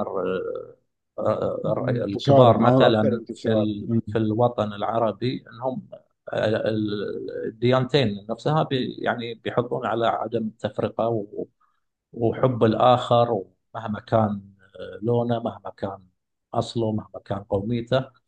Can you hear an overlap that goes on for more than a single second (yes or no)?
yes